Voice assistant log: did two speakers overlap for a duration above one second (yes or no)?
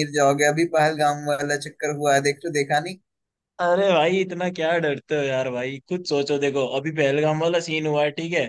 no